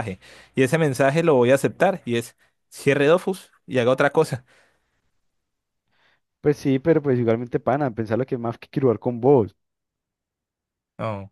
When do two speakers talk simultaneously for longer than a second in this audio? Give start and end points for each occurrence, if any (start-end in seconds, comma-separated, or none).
none